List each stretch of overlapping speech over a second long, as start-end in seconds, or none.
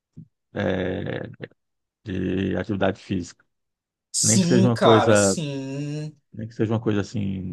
4.2-5.4